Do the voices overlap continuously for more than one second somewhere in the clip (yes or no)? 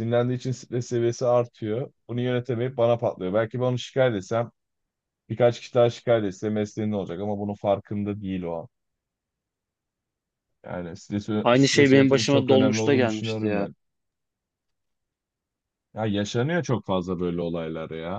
yes